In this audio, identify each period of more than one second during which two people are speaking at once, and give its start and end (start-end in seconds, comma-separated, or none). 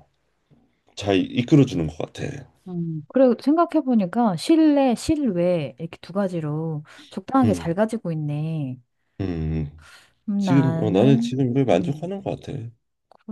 10.4-12.1